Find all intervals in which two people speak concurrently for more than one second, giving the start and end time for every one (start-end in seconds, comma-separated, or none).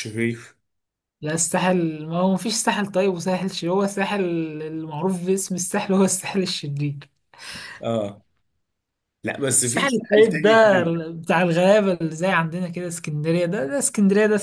9.6-11.0